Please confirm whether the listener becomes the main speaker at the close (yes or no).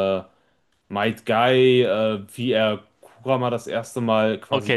yes